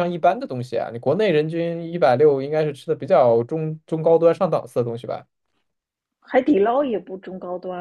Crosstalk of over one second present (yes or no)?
no